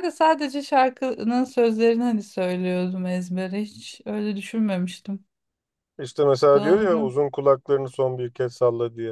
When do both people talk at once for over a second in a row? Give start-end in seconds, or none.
none